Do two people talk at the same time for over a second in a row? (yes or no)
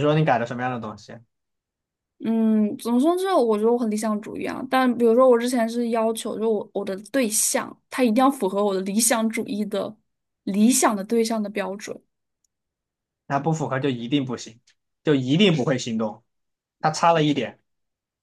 no